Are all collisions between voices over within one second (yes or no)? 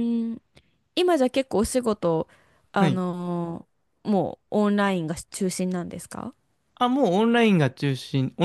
yes